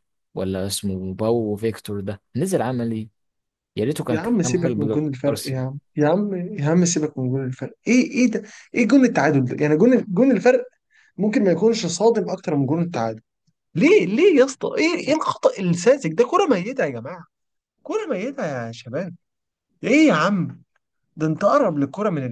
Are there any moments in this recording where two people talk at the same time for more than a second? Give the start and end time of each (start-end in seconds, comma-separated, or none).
4.1-5.7